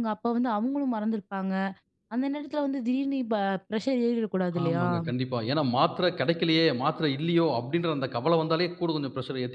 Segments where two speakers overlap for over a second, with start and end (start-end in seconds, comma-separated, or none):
none